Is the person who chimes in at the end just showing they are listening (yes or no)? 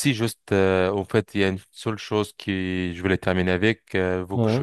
yes